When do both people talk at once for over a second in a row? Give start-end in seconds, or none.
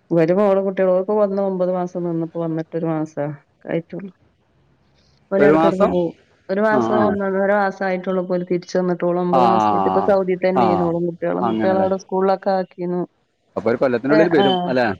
9.4-10.6